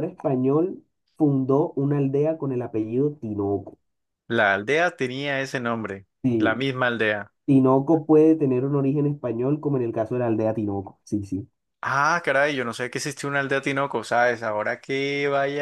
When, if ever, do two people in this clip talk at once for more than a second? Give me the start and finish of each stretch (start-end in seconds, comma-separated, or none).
none